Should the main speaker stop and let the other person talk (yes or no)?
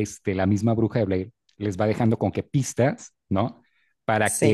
no